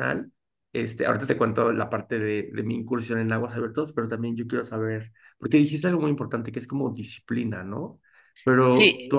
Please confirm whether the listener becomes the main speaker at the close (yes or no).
no